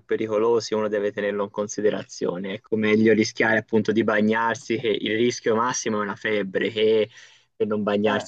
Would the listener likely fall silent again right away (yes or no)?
yes